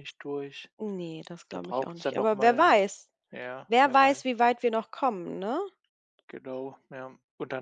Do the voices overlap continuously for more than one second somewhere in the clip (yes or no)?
yes